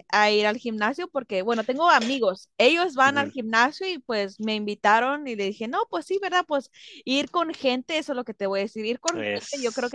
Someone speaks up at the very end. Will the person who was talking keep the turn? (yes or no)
yes